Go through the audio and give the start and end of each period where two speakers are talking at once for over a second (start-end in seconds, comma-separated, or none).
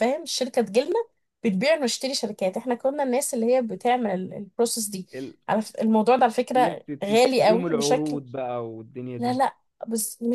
6.5-8.2